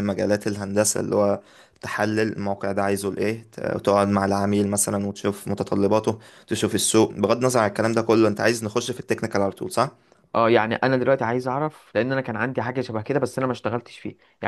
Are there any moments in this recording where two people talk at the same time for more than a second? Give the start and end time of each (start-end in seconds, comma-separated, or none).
none